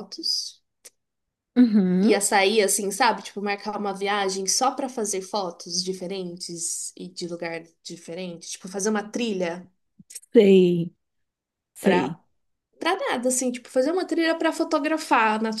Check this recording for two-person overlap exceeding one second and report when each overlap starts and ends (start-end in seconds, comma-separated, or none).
none